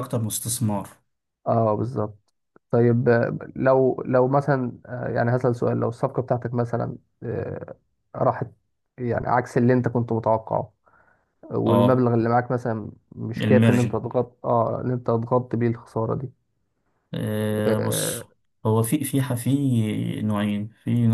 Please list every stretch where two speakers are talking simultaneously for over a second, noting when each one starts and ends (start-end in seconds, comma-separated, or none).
none